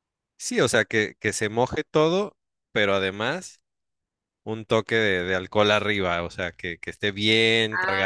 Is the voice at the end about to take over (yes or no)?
yes